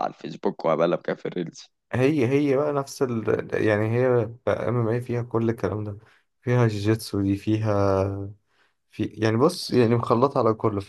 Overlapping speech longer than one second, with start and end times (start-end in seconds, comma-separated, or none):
none